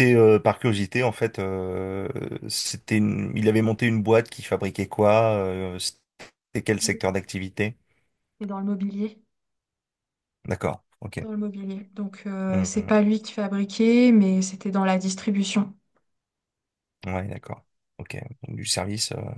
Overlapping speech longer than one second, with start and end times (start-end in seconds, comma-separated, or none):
none